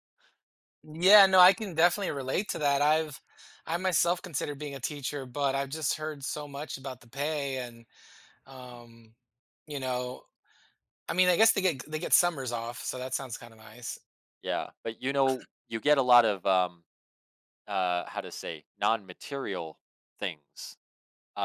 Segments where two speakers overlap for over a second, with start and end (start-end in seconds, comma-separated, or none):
none